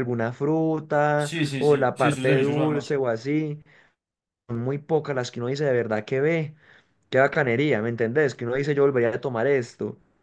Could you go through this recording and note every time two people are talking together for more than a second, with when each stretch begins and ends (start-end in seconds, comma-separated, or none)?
1.1-2.9